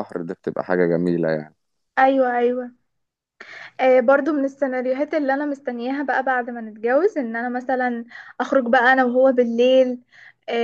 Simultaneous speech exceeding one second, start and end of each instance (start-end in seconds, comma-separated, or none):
none